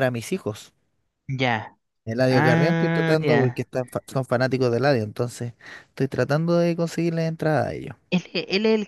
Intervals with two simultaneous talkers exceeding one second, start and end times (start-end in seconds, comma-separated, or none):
2.3-3.6